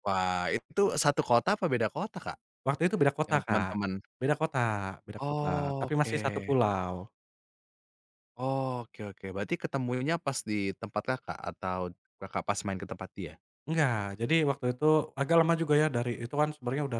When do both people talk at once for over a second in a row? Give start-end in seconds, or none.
5.2-6.6